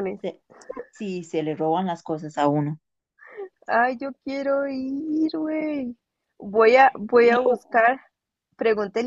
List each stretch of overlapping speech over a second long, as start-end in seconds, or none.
none